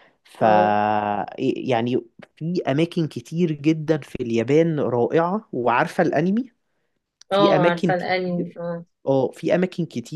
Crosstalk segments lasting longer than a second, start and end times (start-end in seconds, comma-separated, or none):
7.3-8.6